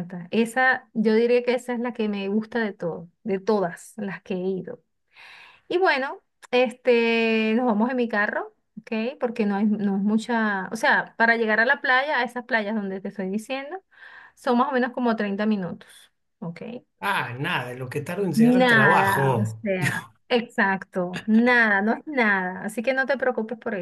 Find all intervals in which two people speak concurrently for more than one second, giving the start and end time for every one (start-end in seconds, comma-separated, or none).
18.3-19.7